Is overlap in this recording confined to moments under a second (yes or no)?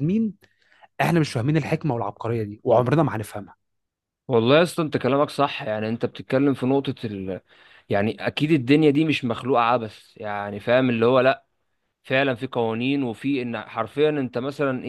yes